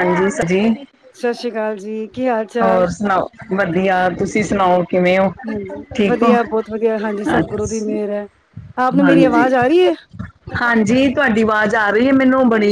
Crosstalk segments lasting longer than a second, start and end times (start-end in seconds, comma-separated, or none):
none